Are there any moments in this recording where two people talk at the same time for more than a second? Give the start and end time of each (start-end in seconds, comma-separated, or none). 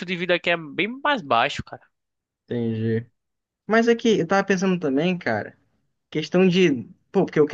none